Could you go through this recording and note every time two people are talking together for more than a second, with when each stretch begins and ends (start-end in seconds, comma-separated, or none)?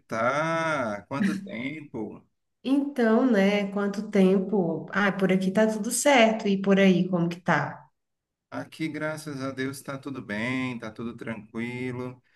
none